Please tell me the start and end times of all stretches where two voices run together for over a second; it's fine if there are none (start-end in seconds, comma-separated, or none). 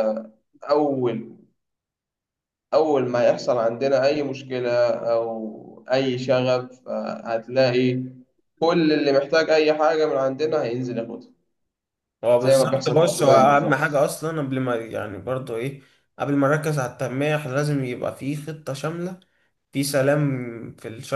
12.4-14.0